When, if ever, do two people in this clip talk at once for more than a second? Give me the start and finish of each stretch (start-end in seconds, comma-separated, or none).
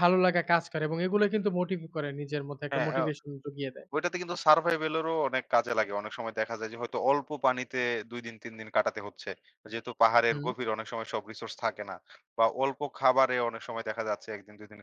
none